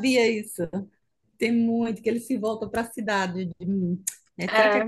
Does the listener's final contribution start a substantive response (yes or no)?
no